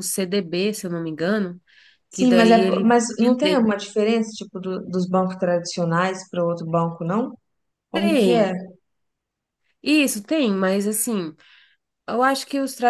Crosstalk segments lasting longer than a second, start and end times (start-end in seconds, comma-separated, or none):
2.1-3.6